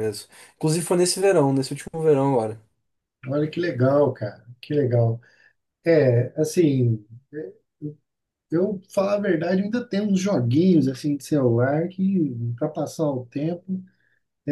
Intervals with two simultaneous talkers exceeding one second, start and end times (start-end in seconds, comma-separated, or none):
none